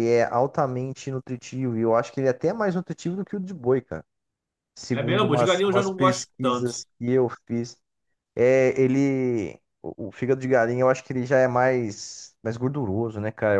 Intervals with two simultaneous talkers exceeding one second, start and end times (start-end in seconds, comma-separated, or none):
4.9-6.7